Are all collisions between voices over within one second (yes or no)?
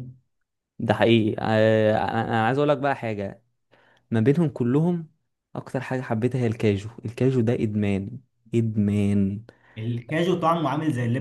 yes